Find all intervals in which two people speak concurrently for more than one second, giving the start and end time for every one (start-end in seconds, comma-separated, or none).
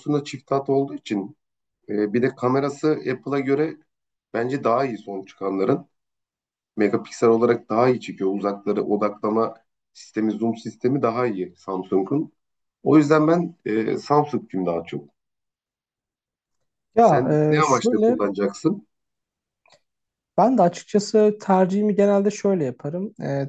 17.0-18.2